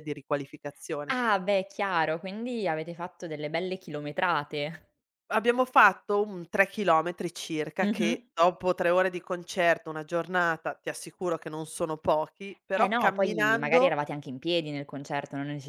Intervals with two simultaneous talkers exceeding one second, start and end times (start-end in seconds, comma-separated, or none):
12.8-14.0